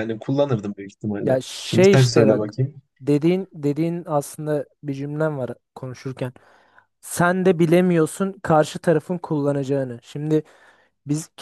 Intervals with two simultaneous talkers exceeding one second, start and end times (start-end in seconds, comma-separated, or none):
1.2-2.5